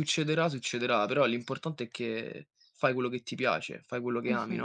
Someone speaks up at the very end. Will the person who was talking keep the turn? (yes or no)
no